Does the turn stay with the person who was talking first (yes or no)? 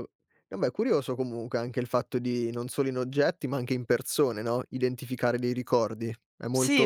no